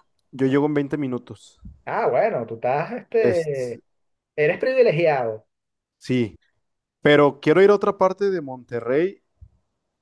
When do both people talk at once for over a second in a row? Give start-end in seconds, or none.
none